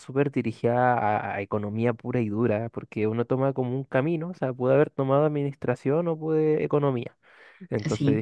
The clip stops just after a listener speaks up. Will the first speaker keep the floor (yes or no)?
yes